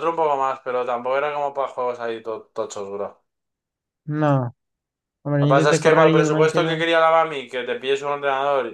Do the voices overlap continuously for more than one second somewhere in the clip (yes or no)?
yes